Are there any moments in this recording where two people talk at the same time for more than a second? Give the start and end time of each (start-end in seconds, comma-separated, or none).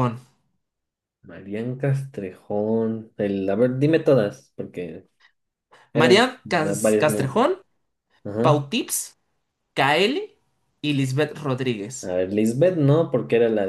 5.9-7.5